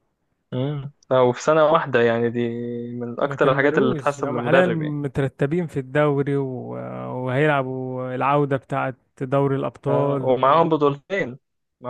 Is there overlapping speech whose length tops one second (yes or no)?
yes